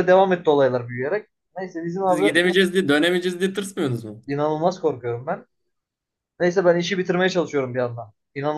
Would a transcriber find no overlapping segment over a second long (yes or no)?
yes